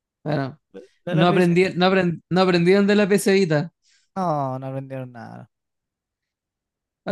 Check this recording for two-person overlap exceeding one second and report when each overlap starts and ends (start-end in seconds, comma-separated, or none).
none